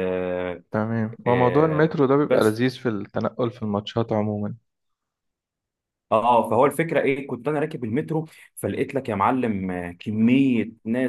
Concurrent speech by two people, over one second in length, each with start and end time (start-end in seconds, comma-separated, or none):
1.3-2.6